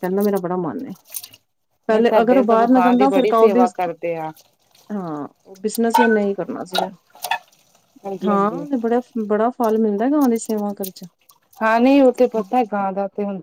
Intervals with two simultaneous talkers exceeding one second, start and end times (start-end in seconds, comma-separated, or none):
1.9-3.6